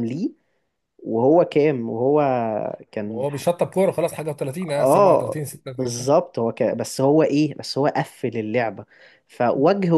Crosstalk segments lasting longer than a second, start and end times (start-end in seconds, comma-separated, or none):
4.7-6.1